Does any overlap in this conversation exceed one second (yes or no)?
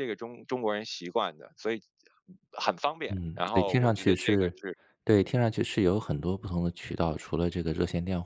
yes